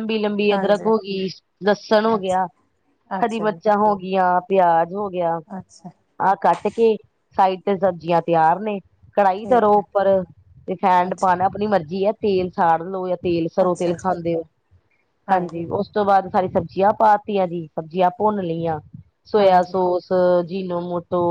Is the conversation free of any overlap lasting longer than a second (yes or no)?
yes